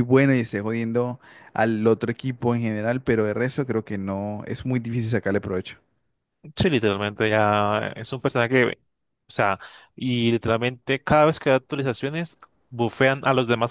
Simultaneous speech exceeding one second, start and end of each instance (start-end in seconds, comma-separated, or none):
none